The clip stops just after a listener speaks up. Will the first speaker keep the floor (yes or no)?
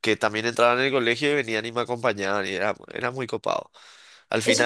no